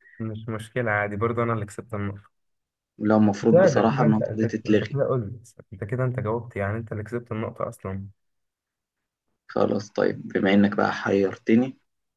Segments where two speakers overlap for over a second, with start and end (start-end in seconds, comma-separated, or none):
3.4-5.0